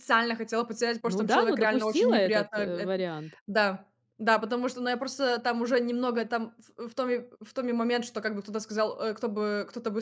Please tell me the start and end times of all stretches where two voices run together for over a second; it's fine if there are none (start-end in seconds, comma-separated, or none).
1.0-2.9